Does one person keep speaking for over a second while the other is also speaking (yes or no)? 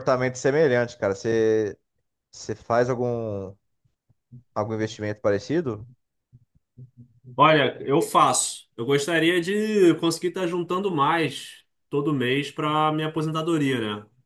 no